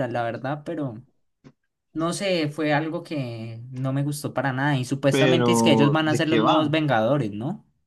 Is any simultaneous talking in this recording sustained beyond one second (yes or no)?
yes